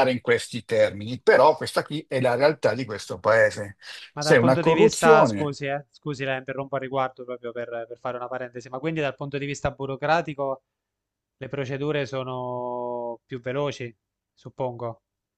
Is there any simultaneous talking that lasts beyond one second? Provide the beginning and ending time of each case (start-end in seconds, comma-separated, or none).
4.2-5.6